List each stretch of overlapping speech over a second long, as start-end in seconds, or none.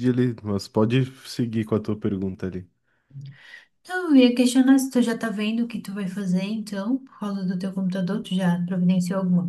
none